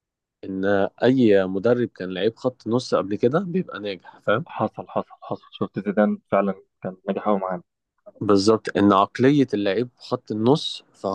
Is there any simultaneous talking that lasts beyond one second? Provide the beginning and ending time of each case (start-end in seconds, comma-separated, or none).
none